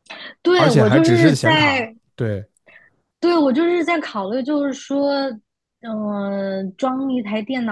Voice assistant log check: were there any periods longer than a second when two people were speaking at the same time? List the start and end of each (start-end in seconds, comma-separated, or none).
0.6-1.9